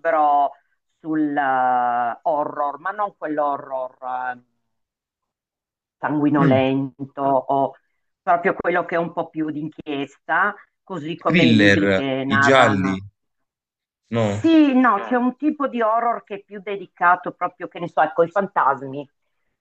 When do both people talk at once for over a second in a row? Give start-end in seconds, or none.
11.2-13.0